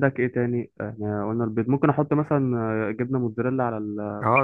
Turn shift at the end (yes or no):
yes